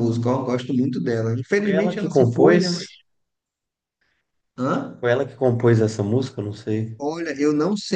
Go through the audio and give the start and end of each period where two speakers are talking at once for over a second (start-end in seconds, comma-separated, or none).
1.6-2.9